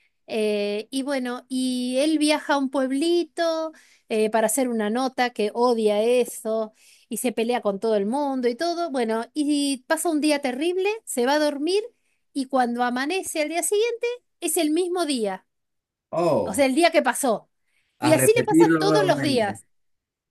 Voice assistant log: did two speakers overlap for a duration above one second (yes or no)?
yes